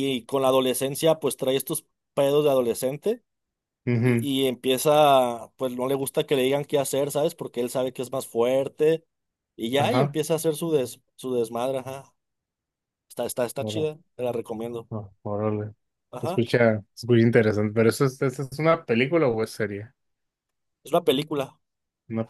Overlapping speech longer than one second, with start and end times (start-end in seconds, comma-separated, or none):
none